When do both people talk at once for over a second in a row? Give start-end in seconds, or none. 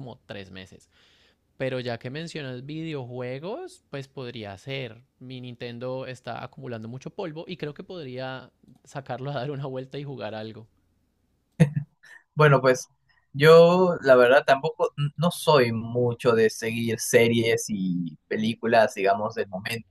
none